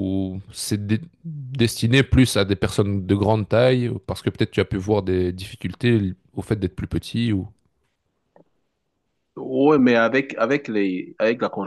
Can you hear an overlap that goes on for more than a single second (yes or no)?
no